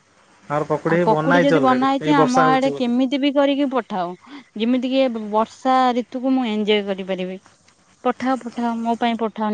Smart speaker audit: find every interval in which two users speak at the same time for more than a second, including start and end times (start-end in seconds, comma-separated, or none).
1.1-2.9